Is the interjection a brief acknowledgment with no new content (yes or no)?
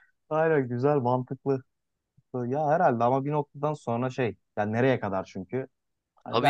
yes